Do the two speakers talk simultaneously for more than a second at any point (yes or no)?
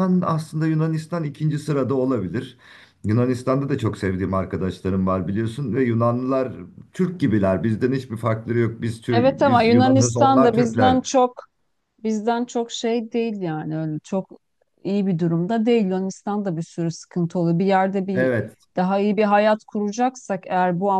yes